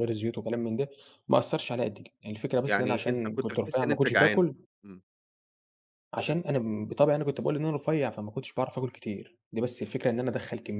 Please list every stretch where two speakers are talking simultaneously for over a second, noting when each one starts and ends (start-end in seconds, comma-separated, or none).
2.6-4.5